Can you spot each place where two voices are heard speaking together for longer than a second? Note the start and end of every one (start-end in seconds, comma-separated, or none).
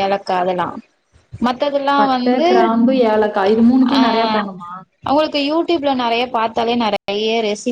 none